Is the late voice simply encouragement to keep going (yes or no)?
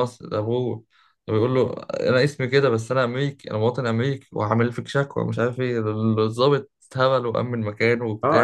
no